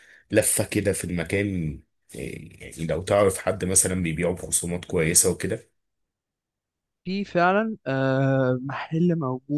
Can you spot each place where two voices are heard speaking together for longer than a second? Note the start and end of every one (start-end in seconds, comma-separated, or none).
none